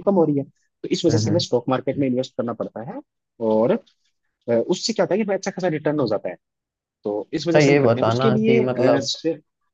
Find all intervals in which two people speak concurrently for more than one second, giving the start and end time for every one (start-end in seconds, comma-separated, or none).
7.5-9.1